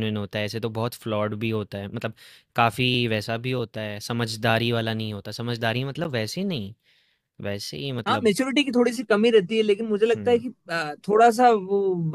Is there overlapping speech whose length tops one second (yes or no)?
no